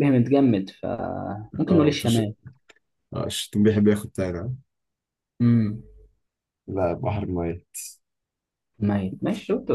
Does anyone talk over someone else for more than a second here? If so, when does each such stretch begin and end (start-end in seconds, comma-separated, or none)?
none